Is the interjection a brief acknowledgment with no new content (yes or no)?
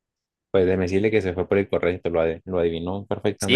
no